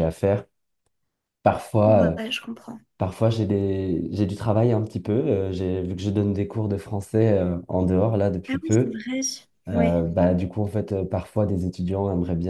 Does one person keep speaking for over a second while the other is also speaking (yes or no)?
no